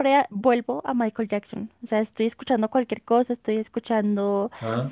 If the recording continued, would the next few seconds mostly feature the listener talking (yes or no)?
no